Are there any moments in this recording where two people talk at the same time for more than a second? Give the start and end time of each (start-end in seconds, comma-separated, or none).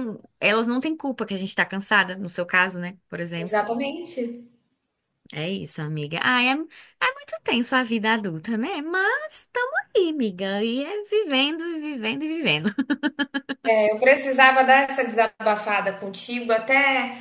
none